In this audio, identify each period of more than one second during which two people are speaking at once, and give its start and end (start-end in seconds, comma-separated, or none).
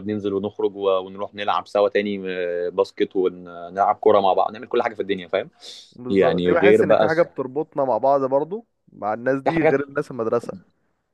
6.1-7.3